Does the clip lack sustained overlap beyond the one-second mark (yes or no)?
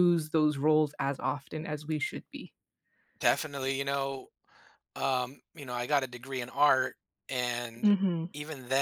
yes